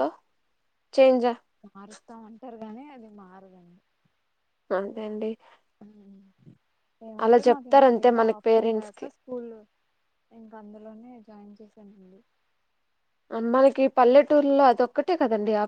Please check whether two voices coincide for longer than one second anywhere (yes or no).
yes